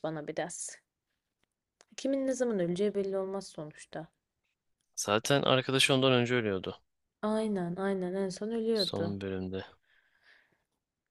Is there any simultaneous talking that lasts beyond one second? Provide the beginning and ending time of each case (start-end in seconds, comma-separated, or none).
none